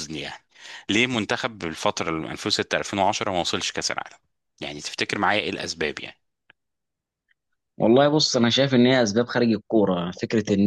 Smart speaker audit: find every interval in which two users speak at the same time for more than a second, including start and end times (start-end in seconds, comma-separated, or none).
none